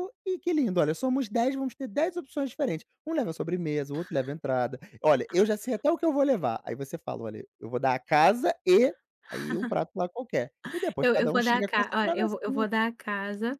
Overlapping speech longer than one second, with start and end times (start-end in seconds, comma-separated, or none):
11.0-12.7